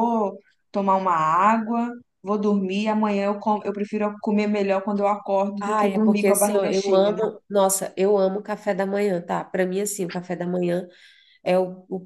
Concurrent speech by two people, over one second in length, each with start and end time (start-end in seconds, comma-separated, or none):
5.6-7.2